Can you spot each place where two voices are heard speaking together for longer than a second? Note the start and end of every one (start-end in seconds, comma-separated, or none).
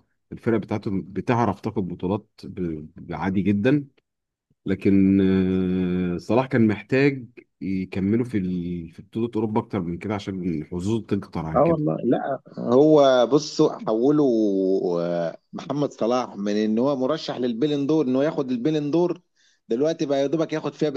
none